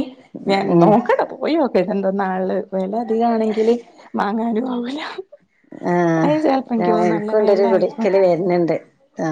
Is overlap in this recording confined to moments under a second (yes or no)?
no